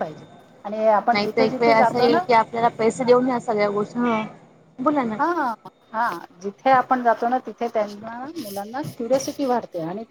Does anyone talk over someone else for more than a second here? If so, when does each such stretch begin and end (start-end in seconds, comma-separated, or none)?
none